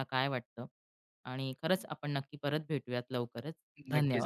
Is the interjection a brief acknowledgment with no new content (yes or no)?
no